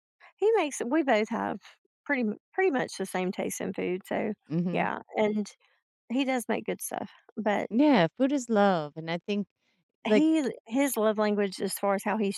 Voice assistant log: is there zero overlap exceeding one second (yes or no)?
yes